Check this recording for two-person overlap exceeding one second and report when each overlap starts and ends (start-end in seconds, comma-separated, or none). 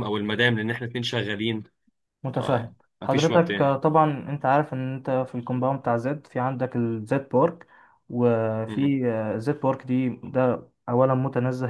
2.3-3.7